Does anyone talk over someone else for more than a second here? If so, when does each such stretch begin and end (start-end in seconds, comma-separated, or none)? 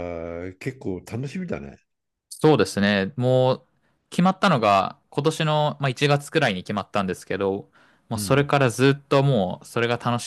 none